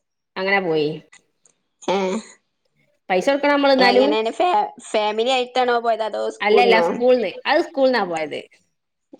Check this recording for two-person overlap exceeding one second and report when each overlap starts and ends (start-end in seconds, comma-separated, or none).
none